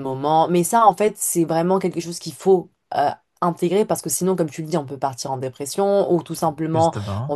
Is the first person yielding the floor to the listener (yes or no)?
no